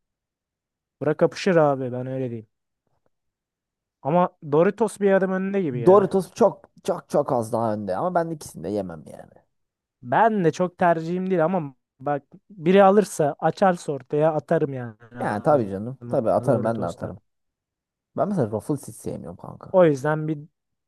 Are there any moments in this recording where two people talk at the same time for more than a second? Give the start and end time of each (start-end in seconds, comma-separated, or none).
15.5-17.1